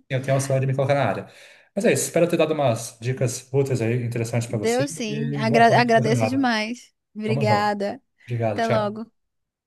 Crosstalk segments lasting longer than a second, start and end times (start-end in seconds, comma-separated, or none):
4.5-6.5